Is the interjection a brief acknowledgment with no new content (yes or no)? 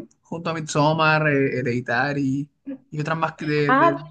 no